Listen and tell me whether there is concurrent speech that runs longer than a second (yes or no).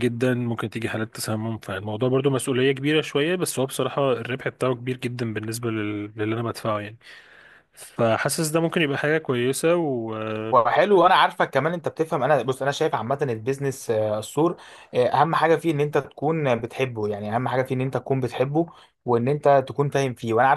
no